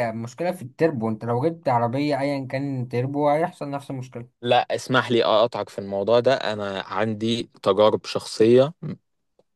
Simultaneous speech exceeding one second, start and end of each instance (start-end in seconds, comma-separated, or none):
none